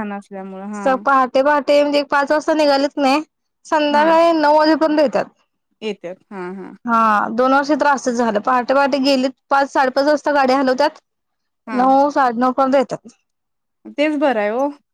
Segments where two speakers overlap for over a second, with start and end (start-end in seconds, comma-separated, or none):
none